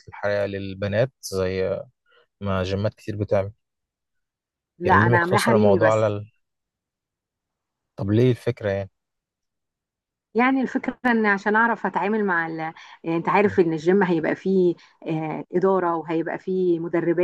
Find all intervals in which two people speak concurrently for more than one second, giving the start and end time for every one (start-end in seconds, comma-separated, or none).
4.8-6.2